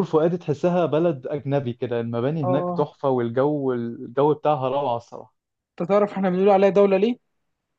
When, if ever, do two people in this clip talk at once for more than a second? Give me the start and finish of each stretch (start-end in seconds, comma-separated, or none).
none